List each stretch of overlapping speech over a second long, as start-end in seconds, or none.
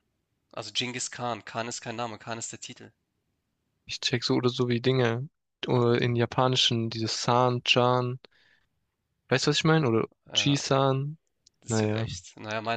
none